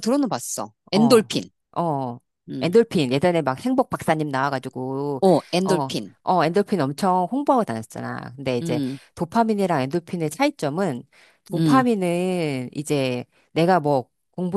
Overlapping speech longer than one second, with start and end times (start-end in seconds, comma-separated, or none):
none